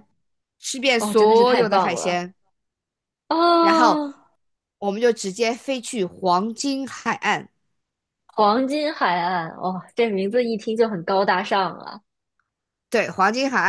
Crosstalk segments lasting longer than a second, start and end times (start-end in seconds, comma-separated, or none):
1.0-2.2